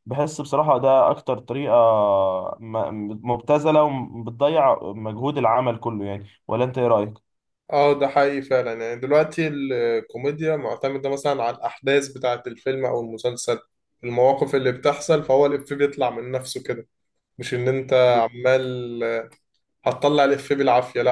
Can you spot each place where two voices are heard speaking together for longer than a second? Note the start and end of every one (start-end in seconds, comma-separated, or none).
none